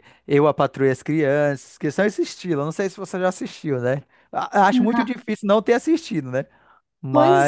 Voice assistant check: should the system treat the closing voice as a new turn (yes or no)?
yes